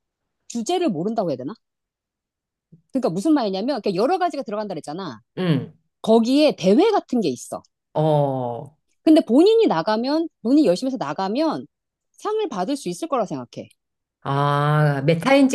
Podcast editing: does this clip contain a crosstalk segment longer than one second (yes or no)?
no